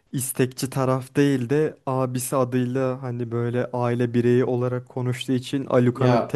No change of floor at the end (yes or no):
yes